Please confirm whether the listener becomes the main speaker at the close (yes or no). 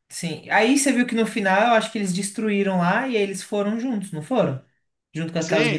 yes